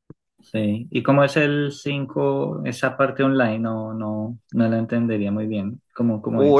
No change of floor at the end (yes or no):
no